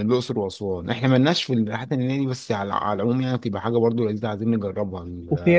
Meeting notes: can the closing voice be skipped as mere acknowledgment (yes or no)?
no